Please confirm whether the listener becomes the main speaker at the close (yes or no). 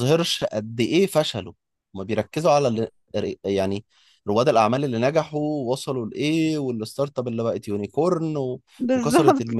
no